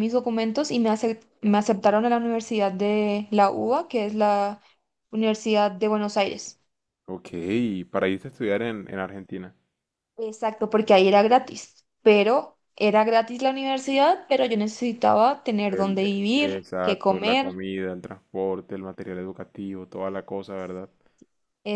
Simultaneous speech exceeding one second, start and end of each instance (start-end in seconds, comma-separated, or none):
15.7-17.5